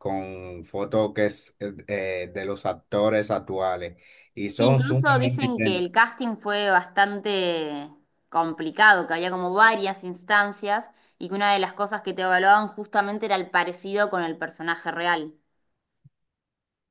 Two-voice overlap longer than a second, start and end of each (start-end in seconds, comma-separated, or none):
4.6-5.9